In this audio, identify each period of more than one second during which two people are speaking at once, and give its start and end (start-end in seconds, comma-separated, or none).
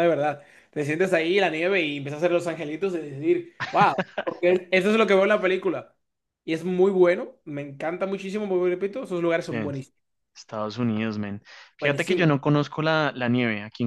none